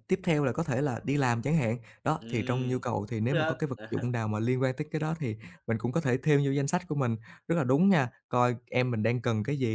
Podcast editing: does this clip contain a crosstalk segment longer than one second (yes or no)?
yes